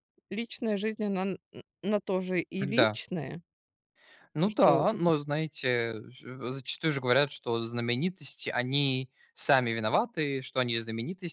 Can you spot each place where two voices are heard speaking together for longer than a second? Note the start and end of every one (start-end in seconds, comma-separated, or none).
none